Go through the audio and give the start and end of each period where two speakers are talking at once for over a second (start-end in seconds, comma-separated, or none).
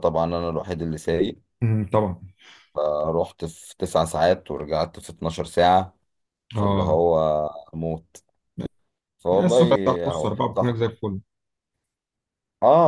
9.3-10.9